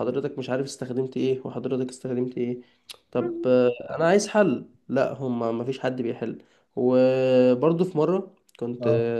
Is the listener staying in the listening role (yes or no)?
yes